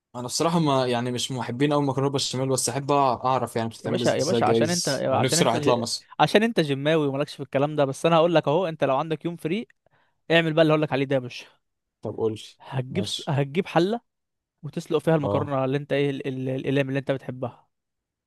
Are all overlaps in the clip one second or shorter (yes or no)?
no